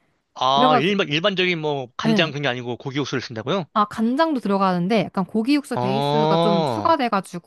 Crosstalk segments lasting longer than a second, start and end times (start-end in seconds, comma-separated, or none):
5.7-6.9